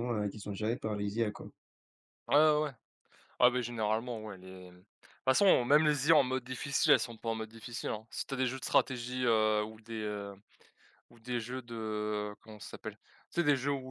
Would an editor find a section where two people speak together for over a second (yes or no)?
no